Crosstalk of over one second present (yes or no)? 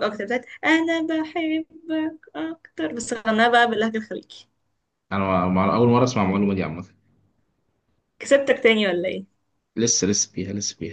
no